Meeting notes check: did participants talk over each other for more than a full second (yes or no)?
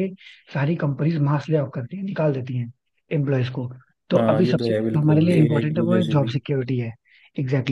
yes